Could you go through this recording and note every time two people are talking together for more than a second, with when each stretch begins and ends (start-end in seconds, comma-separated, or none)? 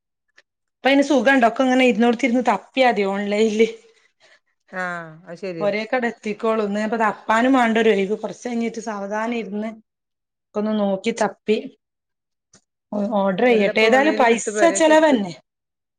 13.6-15.2